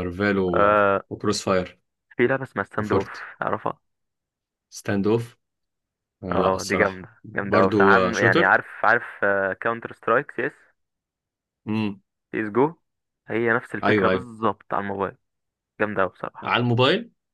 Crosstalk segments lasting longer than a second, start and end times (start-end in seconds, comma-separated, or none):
6.3-8.6